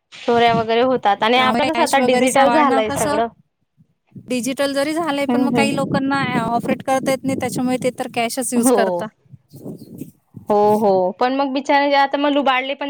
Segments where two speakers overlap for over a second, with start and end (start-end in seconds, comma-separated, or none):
1.4-3.2